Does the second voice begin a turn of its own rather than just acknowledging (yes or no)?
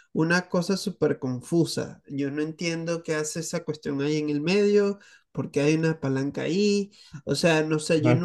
no